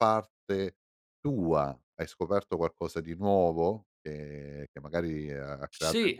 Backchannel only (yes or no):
no